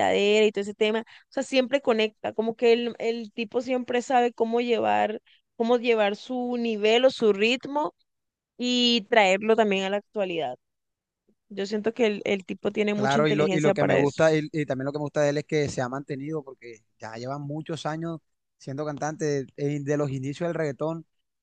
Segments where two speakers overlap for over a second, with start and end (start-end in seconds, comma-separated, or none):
12.9-14.2